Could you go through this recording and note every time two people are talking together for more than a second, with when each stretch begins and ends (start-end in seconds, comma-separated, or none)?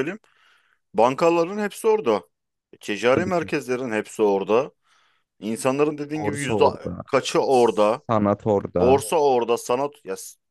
none